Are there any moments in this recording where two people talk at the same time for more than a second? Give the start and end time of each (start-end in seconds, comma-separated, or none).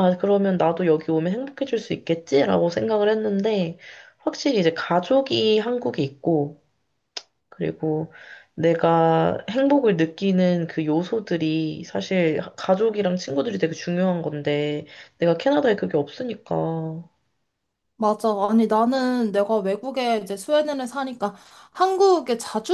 none